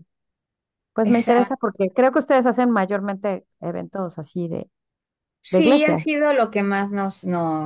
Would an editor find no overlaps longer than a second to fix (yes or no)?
yes